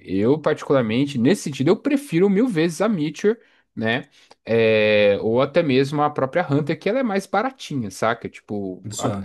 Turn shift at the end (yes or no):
no